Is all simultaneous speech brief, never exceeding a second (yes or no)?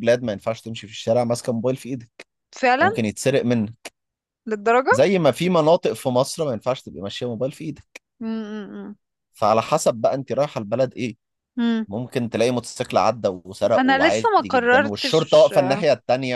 no